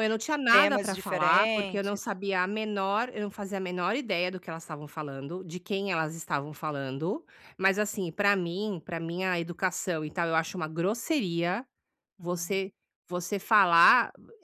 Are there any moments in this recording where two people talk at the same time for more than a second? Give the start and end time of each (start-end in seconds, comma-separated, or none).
0.5-2.0